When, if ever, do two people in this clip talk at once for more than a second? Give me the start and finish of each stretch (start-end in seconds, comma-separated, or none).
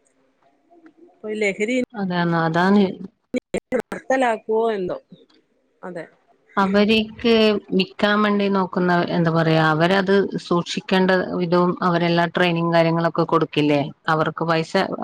none